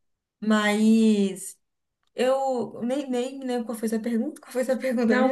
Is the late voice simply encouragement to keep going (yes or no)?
no